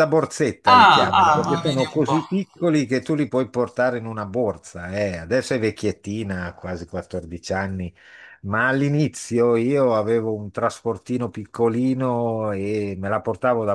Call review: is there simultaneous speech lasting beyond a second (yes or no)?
yes